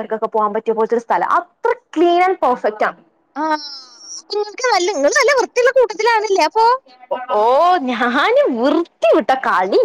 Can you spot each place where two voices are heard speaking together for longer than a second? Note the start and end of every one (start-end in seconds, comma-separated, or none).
none